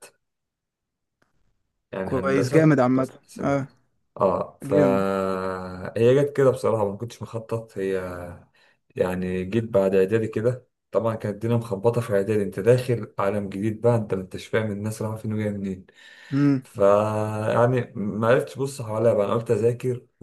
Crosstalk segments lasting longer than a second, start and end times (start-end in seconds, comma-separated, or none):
2.0-3.7